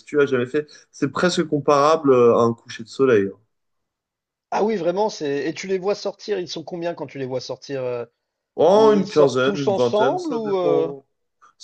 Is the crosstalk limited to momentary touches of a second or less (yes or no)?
no